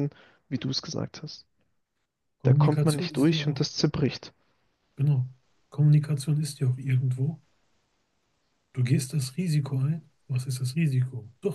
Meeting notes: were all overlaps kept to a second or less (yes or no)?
no